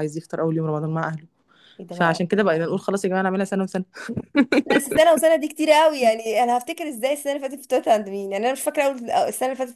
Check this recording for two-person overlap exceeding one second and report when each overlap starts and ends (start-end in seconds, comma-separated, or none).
none